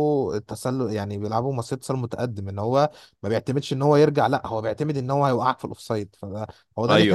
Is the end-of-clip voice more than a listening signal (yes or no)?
yes